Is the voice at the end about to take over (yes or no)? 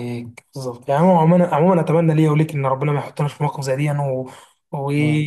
no